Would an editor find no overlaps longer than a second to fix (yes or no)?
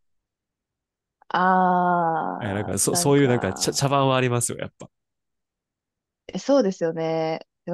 no